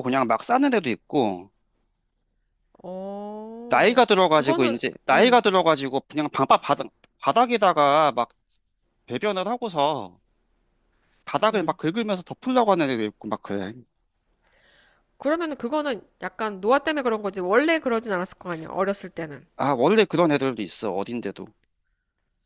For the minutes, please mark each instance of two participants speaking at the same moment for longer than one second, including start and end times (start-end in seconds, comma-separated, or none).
3.7-5.4